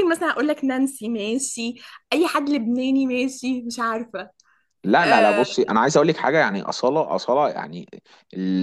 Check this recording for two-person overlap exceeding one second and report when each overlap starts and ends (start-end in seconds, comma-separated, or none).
none